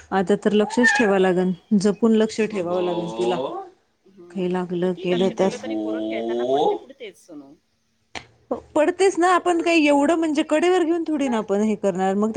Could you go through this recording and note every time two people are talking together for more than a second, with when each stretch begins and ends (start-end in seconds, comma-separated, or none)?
none